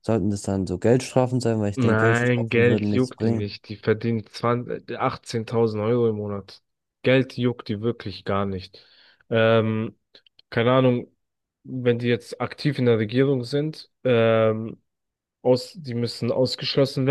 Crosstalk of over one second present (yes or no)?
yes